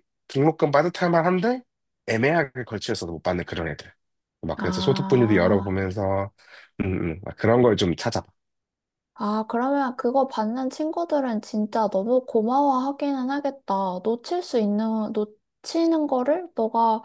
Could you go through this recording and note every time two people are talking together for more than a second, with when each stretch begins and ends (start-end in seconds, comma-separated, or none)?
4.6-5.8